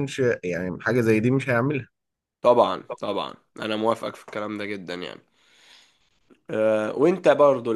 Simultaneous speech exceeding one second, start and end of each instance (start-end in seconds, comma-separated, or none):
none